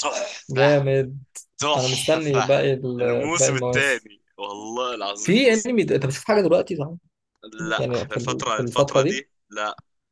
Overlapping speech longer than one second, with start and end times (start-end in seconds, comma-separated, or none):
1.8-4.1, 7.8-9.2